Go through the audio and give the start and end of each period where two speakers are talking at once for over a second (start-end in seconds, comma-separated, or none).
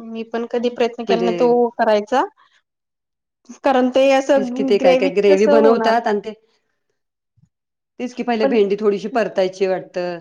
4.3-5.9